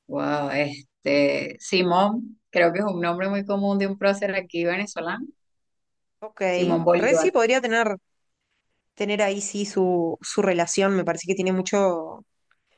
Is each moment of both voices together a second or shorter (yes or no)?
yes